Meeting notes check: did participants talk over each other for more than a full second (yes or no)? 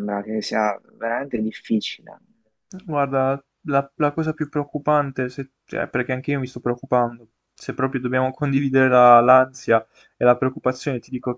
no